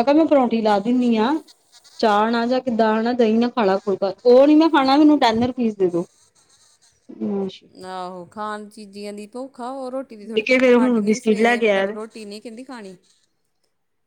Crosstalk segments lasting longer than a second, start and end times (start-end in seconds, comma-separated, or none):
10.3-11.8